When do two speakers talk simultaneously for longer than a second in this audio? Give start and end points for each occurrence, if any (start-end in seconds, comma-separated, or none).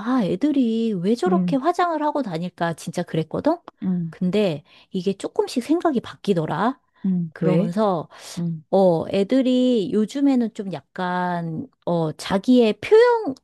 none